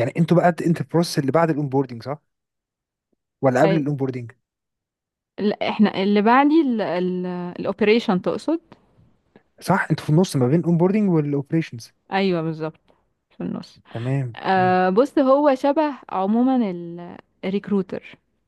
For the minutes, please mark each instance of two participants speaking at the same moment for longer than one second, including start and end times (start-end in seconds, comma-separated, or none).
none